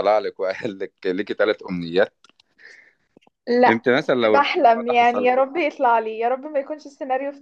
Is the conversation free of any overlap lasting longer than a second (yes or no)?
no